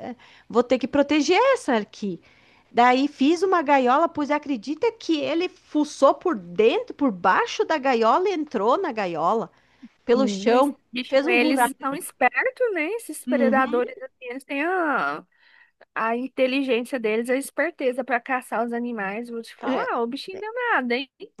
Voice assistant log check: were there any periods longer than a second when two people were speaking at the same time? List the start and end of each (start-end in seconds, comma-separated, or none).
10.2-12.0